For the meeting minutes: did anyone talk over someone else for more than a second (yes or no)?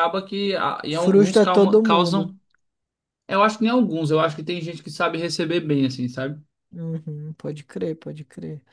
yes